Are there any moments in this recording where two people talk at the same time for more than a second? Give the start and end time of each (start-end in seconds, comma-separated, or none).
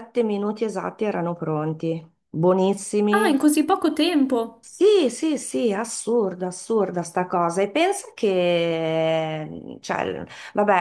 none